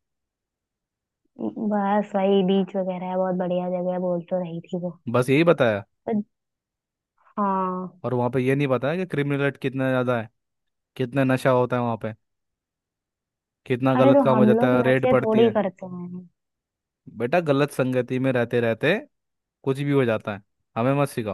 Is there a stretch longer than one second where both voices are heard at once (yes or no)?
yes